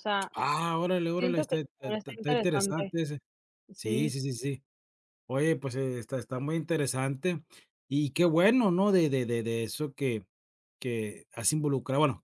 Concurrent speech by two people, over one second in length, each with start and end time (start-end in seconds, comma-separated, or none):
1.2-2.9